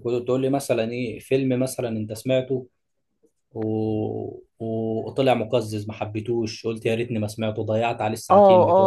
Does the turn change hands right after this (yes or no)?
yes